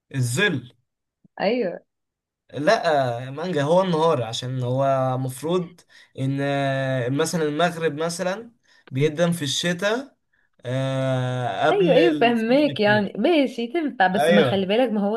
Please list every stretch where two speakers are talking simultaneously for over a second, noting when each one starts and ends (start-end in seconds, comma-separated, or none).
11.7-13.1